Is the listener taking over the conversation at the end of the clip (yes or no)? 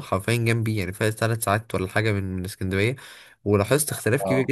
no